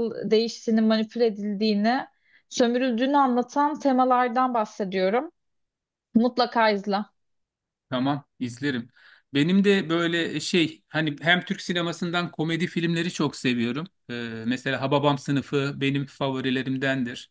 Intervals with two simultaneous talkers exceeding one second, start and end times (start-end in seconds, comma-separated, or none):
none